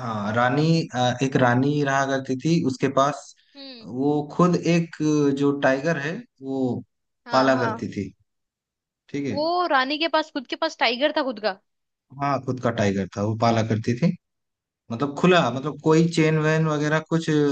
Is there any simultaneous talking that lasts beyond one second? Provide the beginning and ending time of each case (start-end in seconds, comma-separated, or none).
none